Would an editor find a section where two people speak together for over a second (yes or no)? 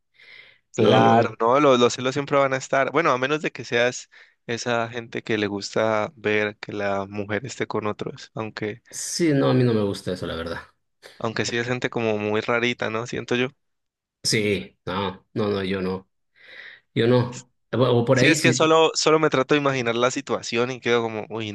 no